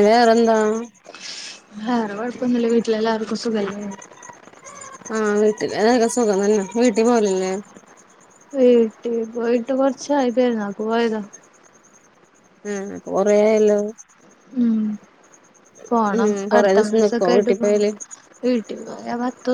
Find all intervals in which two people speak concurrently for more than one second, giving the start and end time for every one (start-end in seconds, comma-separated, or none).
16.1-17.8